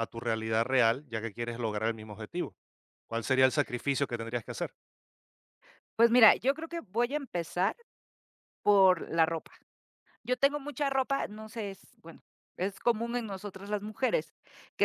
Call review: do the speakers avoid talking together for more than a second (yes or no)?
yes